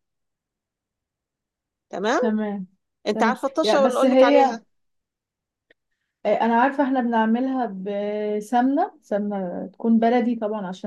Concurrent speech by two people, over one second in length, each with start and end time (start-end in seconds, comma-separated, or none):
3.1-4.6